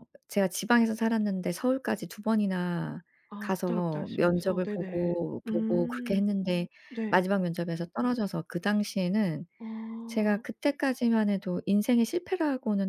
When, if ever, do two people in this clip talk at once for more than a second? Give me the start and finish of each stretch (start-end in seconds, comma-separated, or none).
3.4-6.3